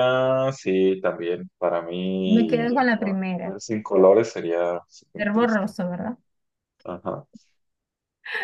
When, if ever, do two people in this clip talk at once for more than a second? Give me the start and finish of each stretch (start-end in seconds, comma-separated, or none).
2.2-3.5